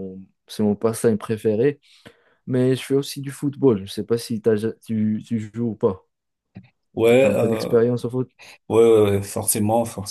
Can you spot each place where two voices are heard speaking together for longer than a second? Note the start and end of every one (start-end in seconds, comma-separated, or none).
none